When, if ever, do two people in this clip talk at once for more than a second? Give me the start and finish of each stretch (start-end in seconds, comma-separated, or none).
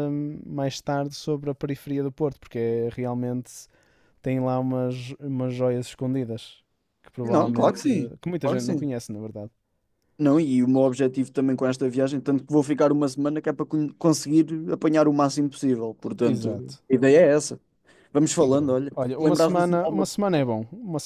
7.2-8.9, 18.4-20.1